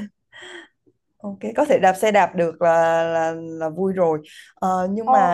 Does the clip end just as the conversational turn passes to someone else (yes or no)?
no